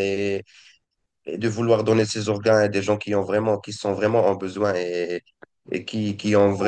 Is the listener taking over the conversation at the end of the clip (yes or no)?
no